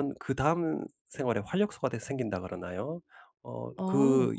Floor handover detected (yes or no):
no